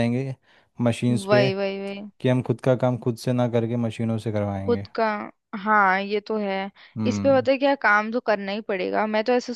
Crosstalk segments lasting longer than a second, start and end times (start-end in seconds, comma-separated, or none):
none